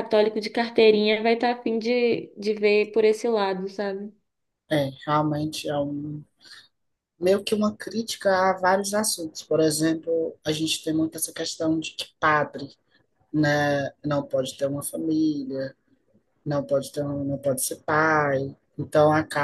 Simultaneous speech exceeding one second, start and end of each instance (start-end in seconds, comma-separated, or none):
none